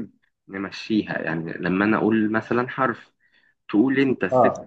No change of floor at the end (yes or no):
yes